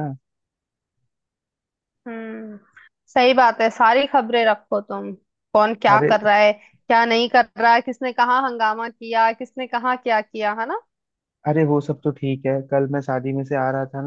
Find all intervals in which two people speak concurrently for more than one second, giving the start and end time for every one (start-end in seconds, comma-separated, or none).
none